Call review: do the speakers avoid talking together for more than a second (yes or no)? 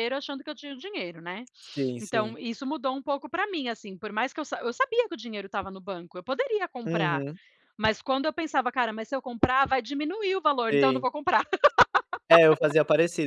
yes